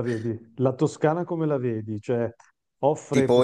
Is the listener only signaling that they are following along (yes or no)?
no